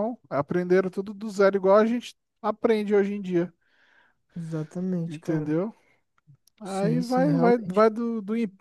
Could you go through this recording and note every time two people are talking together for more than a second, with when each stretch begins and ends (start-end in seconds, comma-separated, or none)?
6.6-7.9